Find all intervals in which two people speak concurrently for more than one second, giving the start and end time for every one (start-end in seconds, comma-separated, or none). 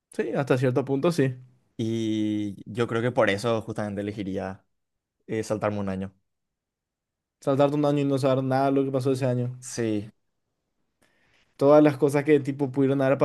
none